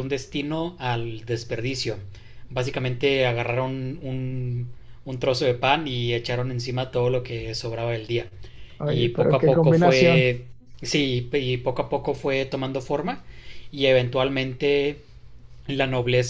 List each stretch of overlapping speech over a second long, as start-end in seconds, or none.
8.8-10.3